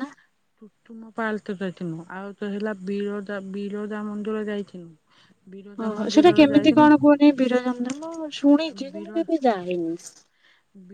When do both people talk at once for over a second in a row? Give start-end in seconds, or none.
none